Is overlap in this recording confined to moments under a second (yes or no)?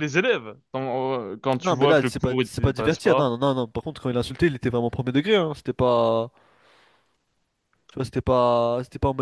no